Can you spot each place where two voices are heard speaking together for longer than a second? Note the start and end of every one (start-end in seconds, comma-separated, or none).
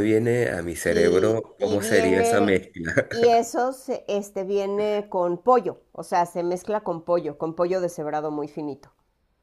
0.8-2.6